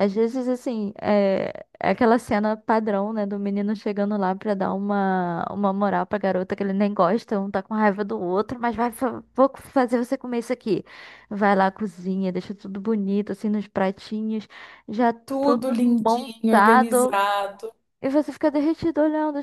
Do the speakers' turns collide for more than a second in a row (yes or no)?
yes